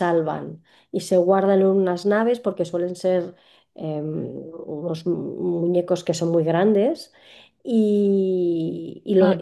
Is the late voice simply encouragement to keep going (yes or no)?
yes